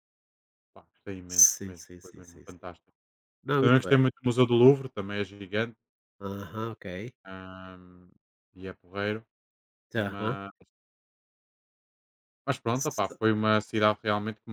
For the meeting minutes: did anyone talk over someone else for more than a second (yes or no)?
yes